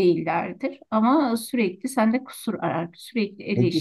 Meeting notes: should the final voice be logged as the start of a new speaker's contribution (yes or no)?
yes